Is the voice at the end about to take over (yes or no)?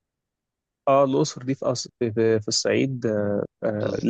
no